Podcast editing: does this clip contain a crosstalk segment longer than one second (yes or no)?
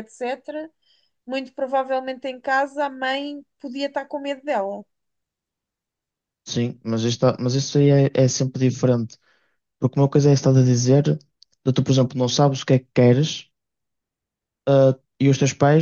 no